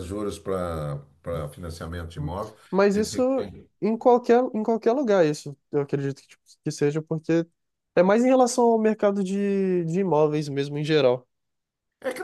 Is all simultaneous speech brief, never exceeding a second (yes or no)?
yes